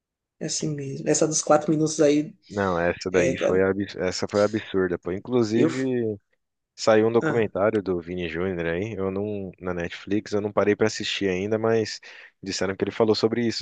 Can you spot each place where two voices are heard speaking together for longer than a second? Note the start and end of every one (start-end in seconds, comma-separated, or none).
none